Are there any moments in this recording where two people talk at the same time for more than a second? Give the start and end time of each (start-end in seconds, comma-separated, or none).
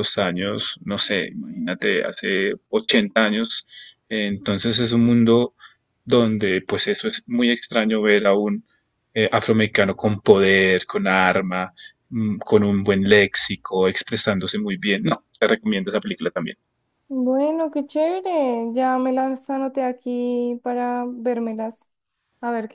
none